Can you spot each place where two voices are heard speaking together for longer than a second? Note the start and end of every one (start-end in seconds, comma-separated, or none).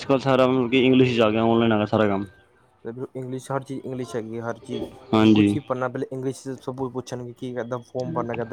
none